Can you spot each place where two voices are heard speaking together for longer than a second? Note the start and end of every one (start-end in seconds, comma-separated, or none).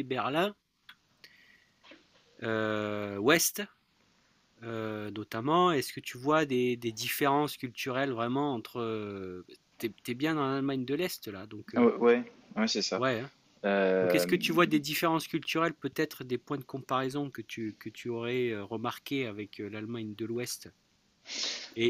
none